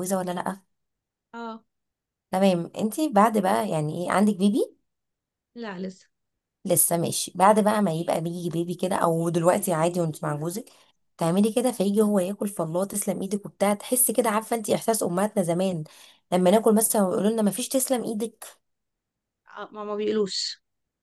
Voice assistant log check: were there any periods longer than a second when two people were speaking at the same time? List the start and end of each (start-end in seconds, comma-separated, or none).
none